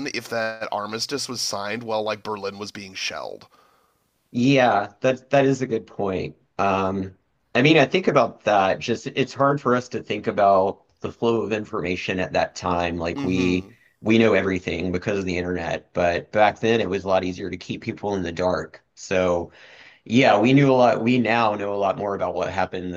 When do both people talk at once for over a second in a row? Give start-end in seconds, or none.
none